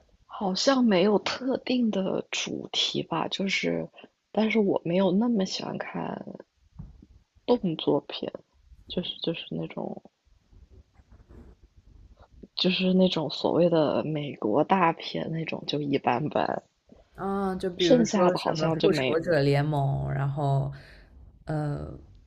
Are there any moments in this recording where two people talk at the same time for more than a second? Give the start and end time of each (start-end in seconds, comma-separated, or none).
17.8-19.2